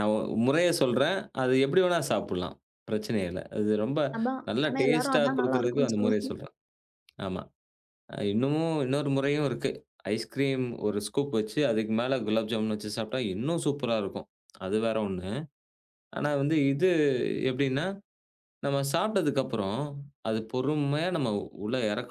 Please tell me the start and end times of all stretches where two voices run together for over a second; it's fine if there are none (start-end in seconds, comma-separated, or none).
4.5-6.3